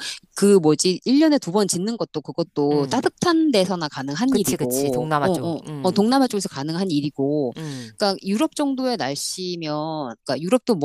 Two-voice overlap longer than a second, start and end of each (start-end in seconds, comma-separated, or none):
4.3-6.1